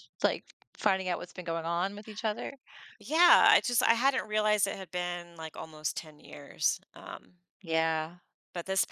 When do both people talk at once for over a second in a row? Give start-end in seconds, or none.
none